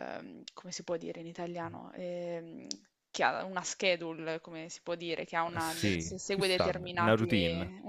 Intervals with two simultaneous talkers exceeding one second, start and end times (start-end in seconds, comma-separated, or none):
5.5-7.2